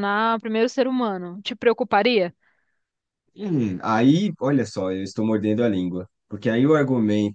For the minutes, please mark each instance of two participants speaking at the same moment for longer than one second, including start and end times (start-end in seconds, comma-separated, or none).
none